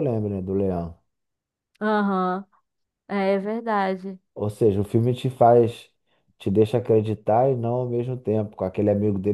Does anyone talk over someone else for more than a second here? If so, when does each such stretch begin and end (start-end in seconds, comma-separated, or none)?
none